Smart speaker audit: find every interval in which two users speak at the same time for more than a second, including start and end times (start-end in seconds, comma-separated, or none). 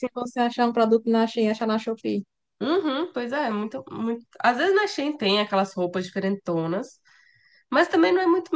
none